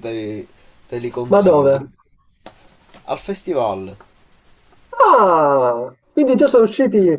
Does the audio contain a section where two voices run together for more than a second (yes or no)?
no